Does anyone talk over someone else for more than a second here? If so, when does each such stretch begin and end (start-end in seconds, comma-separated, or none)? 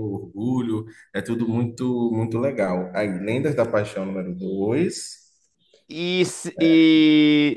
none